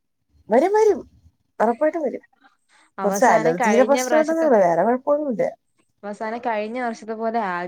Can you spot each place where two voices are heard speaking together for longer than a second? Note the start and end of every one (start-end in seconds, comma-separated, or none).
3.0-4.5